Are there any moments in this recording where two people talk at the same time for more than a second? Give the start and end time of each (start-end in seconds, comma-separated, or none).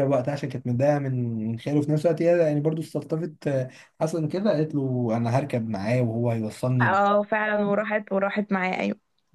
none